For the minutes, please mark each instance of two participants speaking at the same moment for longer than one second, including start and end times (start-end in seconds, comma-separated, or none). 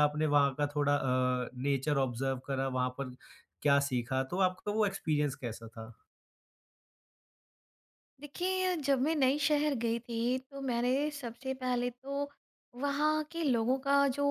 none